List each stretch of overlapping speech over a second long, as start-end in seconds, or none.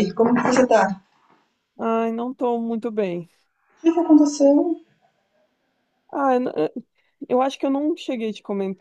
none